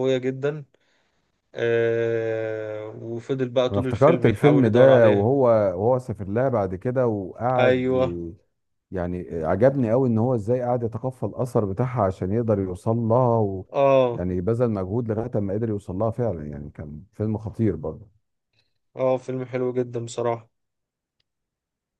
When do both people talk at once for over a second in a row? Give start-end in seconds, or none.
3.7-5.3